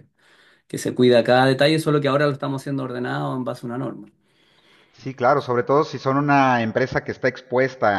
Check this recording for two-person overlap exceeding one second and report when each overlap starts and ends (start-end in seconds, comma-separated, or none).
none